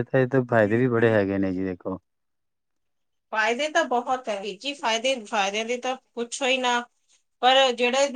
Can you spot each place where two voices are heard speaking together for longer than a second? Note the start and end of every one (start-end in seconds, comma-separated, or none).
none